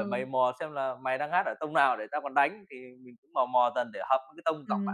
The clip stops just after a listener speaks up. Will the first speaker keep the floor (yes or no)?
no